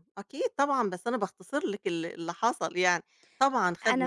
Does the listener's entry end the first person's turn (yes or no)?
yes